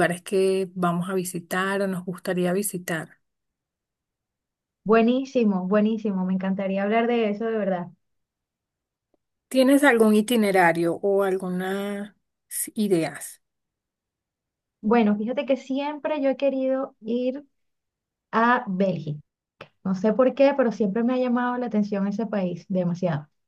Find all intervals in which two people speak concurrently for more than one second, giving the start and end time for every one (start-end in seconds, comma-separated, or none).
none